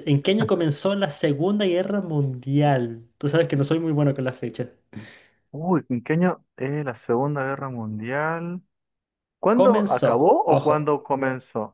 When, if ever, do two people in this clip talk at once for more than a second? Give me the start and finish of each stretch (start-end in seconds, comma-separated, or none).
9.5-11.0